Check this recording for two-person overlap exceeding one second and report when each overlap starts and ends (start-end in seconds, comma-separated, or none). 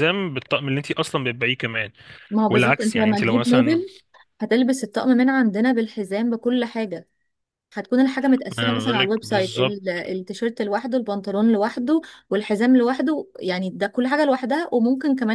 2.5-3.8